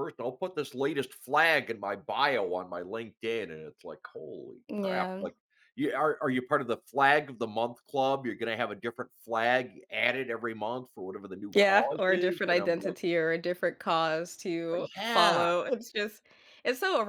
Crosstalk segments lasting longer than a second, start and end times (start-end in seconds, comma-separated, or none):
11.5-13.0